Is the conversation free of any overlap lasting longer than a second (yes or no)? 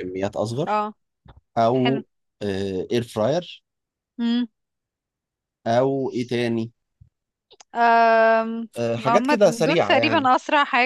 no